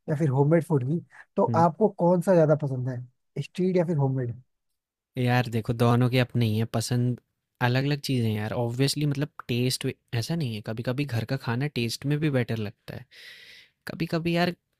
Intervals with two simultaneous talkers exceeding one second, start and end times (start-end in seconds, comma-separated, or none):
none